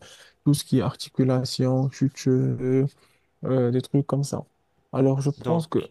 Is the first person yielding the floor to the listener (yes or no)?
no